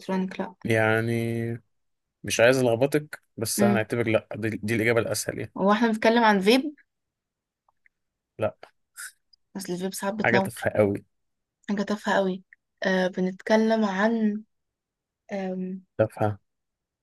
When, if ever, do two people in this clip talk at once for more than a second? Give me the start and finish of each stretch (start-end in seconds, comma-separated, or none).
none